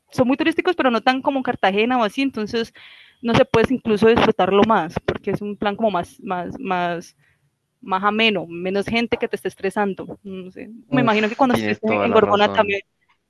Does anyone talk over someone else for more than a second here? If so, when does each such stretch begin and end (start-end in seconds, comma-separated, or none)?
10.9-12.8